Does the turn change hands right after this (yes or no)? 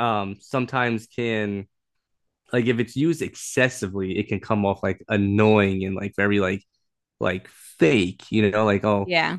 no